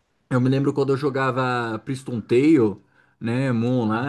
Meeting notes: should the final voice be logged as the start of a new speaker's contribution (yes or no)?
no